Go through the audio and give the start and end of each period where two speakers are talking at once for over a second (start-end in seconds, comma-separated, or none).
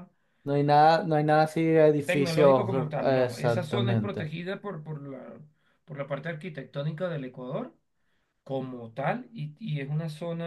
2.0-4.3